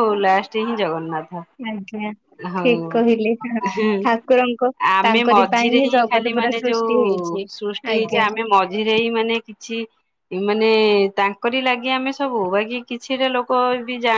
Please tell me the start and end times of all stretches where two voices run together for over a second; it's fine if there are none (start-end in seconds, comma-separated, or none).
5.1-6.9